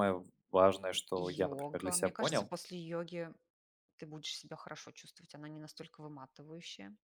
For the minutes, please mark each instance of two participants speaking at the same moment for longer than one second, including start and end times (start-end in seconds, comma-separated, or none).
1.2-2.5